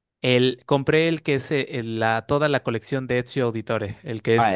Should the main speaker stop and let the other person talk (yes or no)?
yes